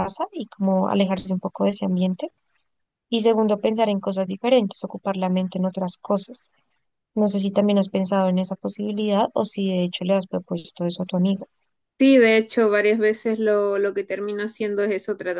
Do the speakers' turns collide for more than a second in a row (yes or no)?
no